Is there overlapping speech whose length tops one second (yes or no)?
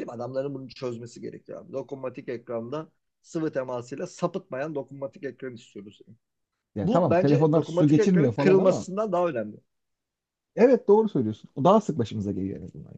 yes